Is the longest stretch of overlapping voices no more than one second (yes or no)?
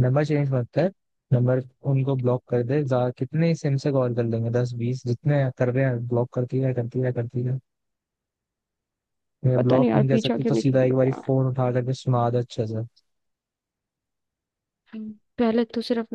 no